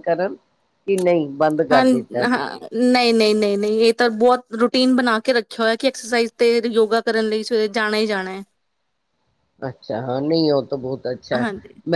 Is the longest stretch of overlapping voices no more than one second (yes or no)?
yes